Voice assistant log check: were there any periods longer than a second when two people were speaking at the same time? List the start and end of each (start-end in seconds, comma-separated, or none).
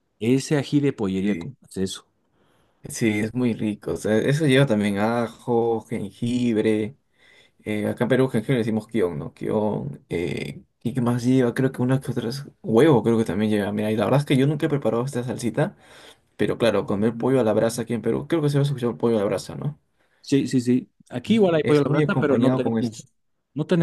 21.3-23.0